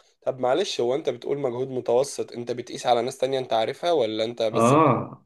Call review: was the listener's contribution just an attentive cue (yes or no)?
no